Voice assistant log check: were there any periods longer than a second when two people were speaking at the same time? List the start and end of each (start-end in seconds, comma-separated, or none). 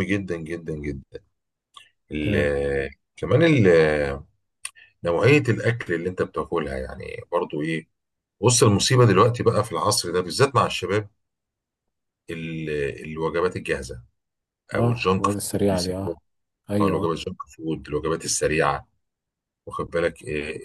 14.8-16.1